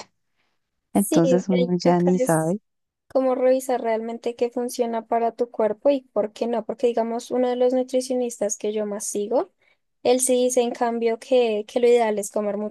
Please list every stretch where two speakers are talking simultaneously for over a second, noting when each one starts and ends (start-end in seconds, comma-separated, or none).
0.9-2.6